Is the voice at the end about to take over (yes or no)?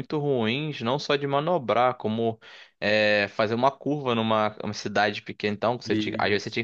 no